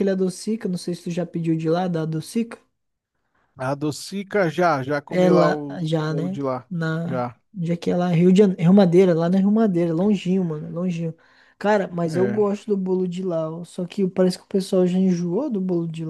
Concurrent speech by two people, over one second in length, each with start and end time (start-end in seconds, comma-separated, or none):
5.1-7.4